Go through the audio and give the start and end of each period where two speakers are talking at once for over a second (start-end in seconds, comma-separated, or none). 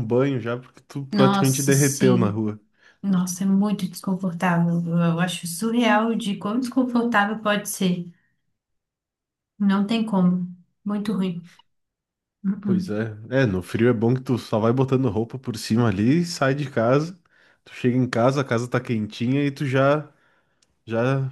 1.1-2.4